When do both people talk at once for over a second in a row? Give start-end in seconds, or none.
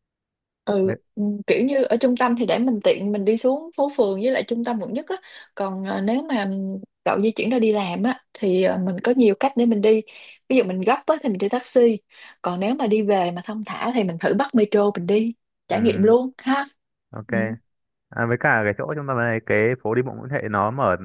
none